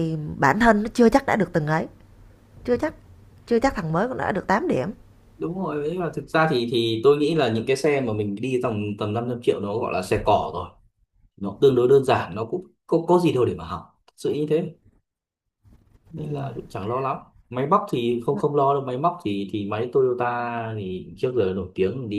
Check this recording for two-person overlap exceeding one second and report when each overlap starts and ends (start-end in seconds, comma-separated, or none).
none